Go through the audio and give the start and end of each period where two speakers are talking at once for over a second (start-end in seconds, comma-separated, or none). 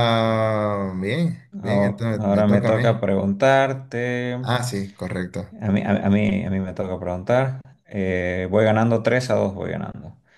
1.7-3.1